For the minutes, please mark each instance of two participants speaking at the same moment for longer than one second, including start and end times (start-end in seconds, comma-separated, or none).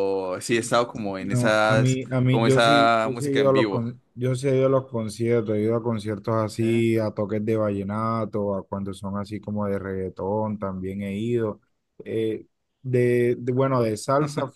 1.2-3.9